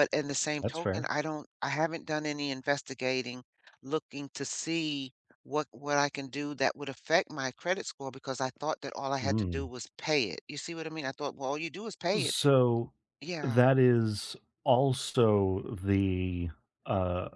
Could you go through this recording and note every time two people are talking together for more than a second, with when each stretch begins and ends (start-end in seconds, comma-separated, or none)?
none